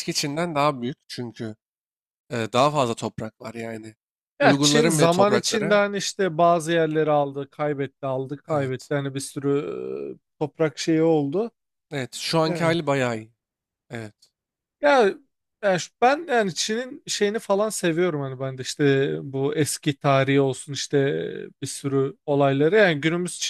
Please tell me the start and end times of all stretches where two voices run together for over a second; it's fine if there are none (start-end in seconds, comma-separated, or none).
4.4-5.9